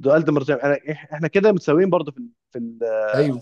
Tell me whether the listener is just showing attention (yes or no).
yes